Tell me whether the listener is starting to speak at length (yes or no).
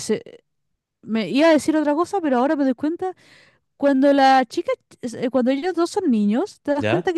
no